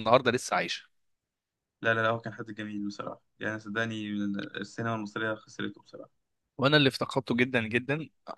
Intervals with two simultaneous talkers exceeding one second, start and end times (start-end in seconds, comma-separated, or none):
none